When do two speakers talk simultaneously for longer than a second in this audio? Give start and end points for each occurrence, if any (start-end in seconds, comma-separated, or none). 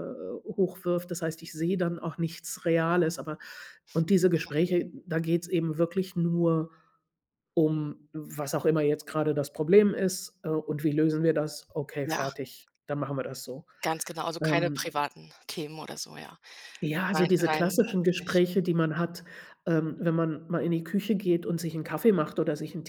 17.1-18.4